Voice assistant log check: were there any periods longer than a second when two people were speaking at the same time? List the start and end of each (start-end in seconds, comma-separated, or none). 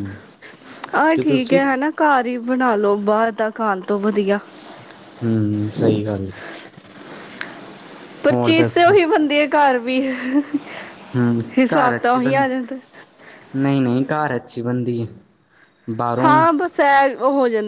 none